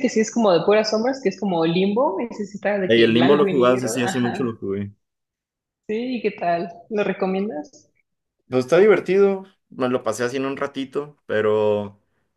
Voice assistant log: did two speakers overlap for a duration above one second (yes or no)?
yes